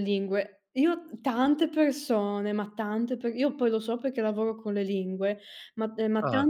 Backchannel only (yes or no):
yes